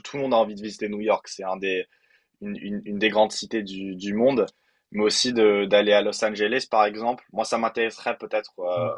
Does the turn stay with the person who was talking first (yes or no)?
yes